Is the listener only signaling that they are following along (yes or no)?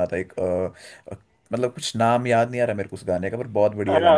no